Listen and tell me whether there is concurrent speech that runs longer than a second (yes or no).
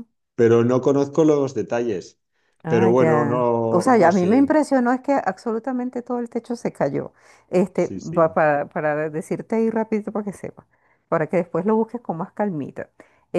yes